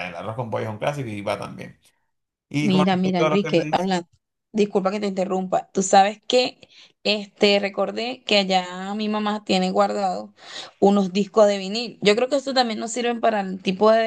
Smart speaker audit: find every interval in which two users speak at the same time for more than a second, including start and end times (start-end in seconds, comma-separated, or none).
2.6-3.9